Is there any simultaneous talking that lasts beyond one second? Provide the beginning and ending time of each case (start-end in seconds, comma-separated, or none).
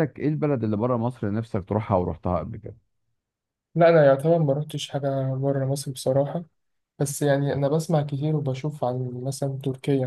none